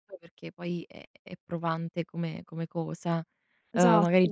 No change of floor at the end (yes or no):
yes